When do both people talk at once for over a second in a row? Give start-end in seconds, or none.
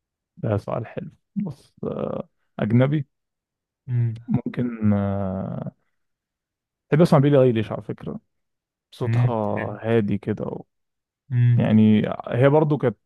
none